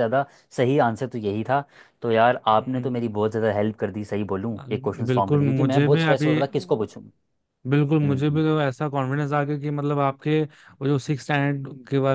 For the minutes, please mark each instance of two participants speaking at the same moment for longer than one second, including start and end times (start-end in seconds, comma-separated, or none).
4.6-6.3